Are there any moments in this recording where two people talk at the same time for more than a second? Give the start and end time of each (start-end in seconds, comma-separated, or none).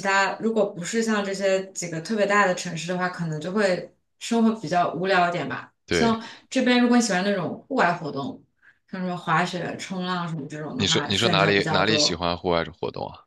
10.7-12.2